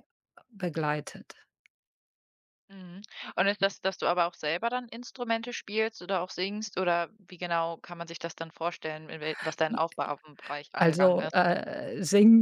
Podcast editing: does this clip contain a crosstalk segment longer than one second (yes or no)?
no